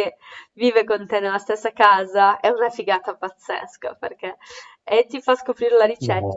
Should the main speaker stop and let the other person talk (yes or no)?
no